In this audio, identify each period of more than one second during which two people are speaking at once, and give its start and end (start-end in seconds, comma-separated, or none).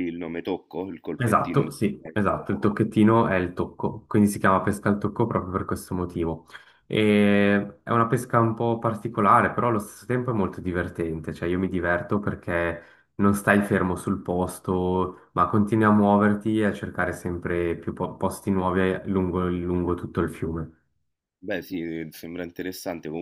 1.2-2.7